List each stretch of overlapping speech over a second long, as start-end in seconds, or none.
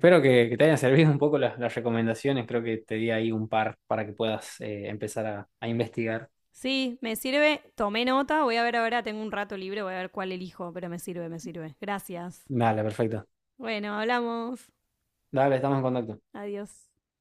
none